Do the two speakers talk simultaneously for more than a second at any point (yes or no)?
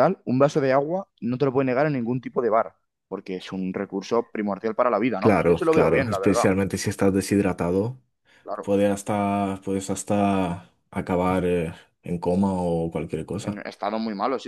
yes